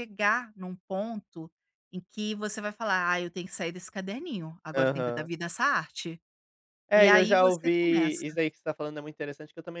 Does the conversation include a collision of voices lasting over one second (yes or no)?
yes